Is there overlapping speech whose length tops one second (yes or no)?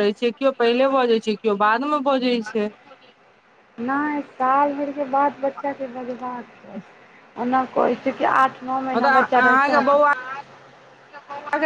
no